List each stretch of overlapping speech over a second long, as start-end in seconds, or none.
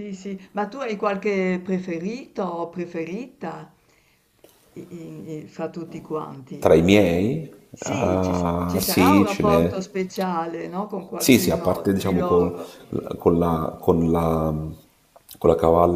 7.7-9.8, 11.2-12.5